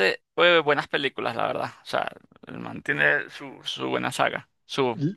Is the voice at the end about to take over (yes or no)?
yes